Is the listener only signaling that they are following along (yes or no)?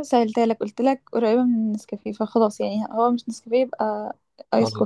no